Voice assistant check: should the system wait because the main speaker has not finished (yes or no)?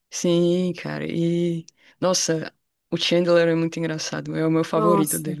no